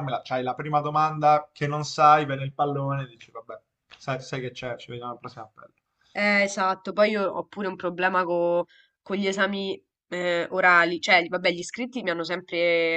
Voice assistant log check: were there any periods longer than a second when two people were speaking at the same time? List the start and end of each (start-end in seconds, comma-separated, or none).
none